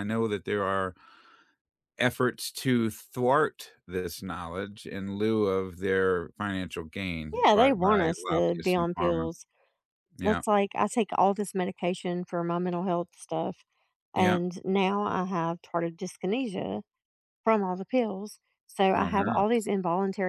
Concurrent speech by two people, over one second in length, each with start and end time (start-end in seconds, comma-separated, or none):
7.4-9.2